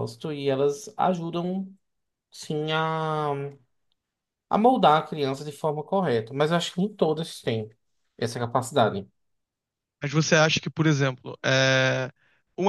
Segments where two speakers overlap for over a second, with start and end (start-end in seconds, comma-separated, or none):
none